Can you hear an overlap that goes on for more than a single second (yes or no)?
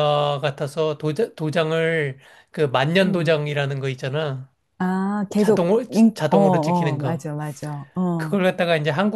yes